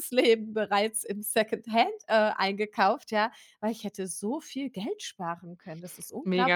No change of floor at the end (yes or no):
no